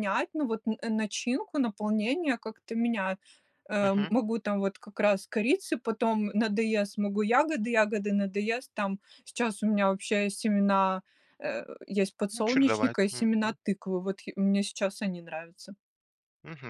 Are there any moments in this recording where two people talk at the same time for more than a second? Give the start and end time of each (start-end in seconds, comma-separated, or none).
12.3-13.6